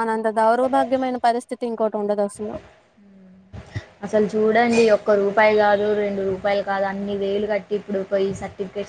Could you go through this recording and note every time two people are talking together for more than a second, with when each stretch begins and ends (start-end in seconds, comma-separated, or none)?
none